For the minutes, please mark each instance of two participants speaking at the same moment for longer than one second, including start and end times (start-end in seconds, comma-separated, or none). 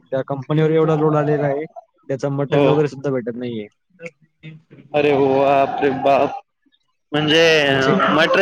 none